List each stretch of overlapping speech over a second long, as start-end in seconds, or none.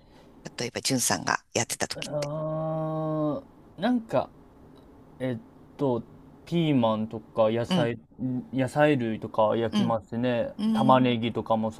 none